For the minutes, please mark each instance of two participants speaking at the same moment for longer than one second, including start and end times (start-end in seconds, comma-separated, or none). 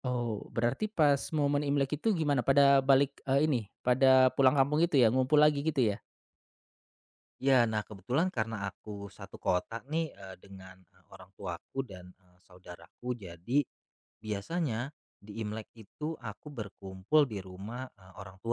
none